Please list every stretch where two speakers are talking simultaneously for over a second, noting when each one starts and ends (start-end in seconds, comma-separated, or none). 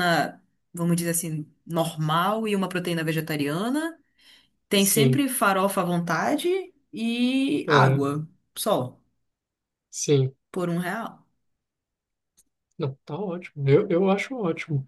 none